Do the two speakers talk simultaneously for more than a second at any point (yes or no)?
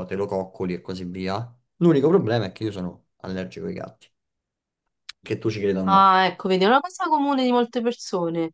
no